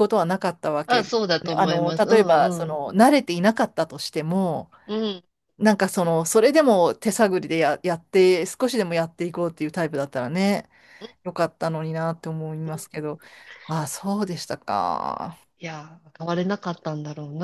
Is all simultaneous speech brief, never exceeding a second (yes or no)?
no